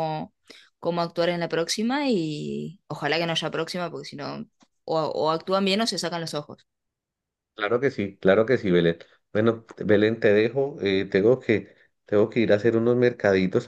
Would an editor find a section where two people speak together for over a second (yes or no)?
no